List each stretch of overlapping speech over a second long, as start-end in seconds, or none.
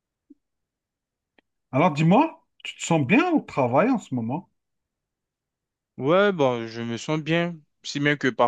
none